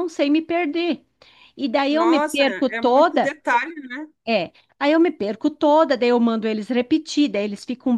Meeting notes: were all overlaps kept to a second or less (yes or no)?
no